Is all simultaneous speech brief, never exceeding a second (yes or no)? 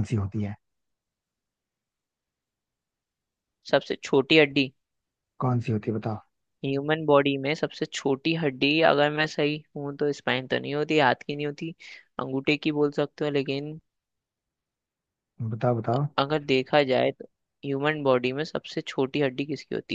yes